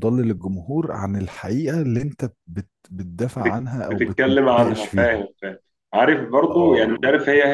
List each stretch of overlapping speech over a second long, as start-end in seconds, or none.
3.4-5.3